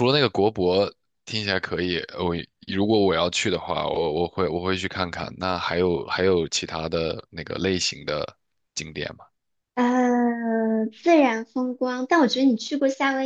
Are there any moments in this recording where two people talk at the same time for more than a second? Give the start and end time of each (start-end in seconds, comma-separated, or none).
none